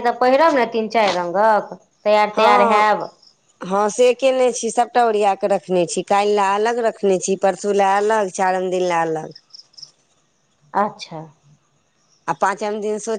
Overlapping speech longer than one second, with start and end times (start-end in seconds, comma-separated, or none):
none